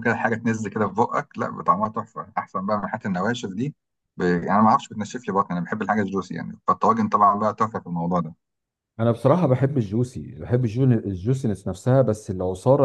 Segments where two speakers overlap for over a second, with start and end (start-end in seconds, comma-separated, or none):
none